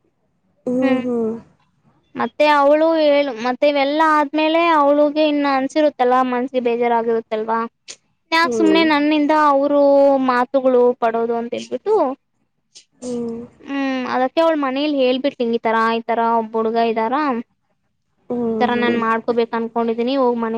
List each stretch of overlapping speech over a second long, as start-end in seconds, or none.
none